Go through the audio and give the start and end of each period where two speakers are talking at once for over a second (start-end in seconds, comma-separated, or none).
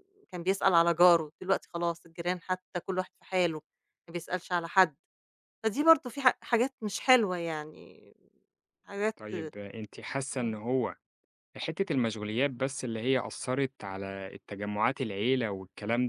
none